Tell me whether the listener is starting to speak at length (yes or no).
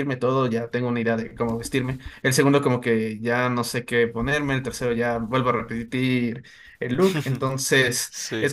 no